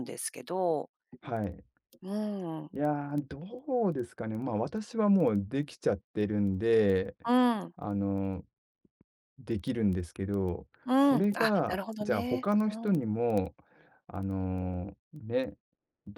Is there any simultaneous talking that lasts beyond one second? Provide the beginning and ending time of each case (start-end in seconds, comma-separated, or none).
10.9-13.1